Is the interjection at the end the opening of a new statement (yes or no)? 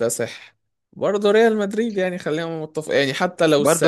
yes